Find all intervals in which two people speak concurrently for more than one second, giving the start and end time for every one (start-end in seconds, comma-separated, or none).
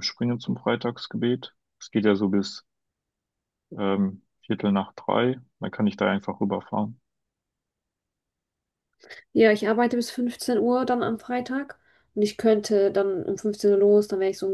none